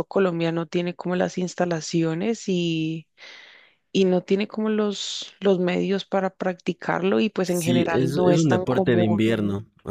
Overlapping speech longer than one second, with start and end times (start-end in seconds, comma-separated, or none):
7.4-9.2